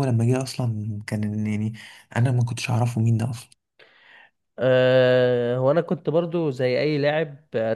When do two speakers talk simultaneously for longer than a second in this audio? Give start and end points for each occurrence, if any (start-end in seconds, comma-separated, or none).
none